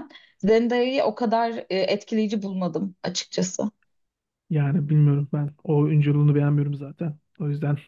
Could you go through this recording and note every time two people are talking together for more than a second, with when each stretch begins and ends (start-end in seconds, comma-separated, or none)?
none